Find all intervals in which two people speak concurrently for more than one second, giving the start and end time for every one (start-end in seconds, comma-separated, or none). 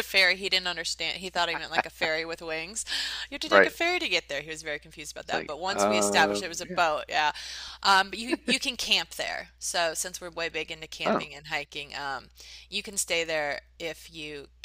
5.2-6.8